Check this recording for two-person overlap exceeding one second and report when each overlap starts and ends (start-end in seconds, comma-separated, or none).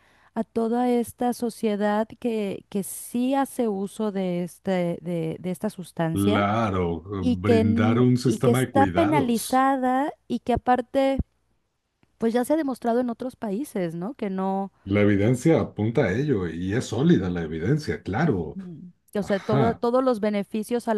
7.2-9.6